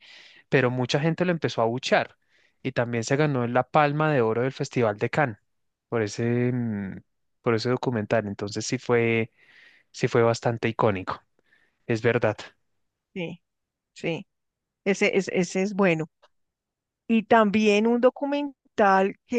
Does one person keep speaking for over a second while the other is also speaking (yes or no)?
no